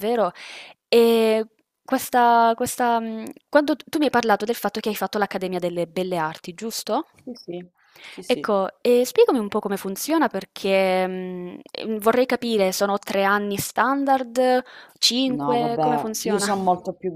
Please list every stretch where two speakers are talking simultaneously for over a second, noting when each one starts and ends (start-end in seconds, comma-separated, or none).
15.3-16.5